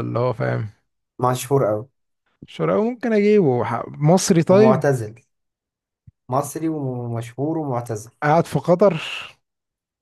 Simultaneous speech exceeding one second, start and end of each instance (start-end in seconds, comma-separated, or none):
none